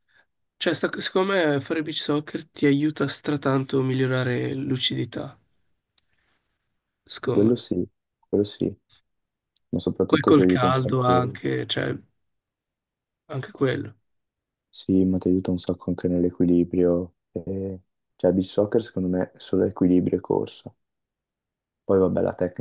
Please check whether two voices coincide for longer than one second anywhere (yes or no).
yes